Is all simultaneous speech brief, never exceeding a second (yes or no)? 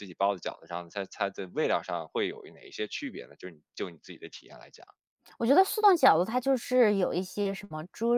yes